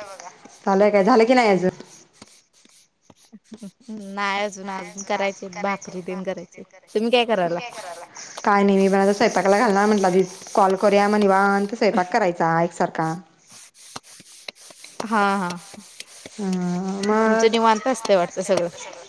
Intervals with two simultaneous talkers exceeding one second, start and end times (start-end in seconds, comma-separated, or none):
none